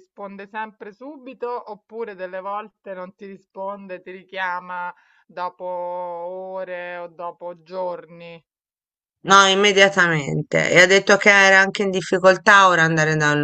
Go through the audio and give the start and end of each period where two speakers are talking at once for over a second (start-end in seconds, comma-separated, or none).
none